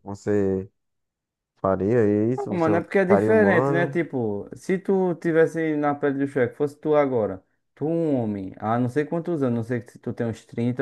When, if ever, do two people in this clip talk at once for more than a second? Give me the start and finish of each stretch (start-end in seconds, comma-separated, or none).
2.5-4.0